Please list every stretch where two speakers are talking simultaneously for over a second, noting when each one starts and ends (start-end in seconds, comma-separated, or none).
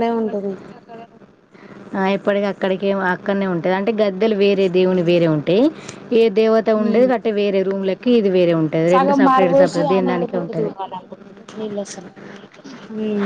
8.9-10.7